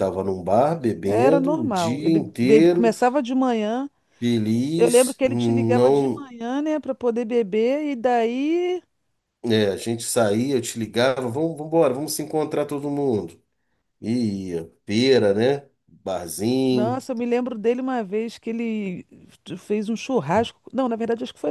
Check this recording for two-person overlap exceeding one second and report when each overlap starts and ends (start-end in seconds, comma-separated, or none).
1.1-2.9, 4.8-6.3